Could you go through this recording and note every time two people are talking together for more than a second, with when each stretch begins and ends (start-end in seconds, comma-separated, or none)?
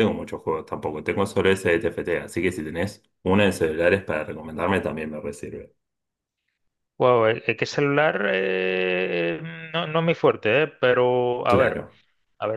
none